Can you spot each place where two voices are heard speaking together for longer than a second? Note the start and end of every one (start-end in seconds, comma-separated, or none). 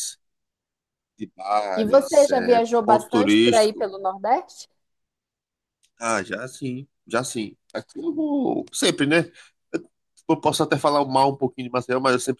1.7-3.9